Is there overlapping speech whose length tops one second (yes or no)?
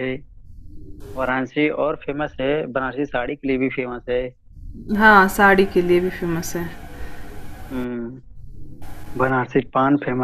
no